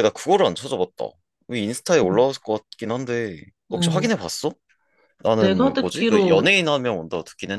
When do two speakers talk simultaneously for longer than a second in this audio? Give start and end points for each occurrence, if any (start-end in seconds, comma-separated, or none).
5.4-6.6